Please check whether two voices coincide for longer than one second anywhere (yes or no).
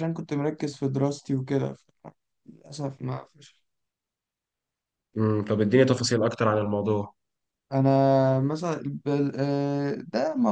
no